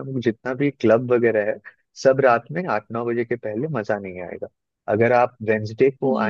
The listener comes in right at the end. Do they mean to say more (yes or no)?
no